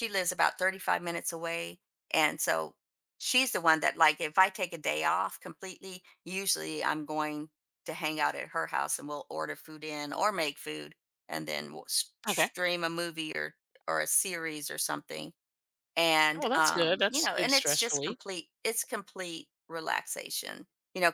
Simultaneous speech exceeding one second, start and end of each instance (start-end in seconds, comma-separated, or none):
16.4-18.2